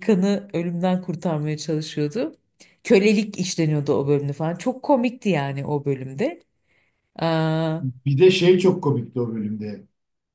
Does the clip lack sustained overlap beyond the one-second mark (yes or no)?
yes